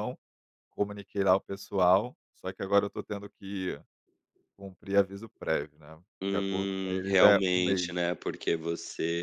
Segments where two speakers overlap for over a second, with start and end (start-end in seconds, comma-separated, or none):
6.2-7.9